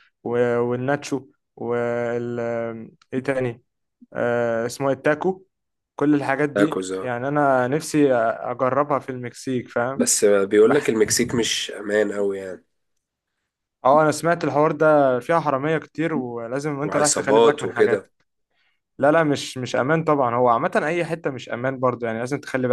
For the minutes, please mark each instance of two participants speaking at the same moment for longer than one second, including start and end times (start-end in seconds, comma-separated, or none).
16.8-18.1